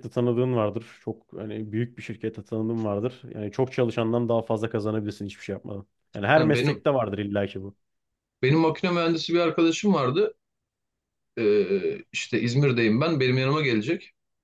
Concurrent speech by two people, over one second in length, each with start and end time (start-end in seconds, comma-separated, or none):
none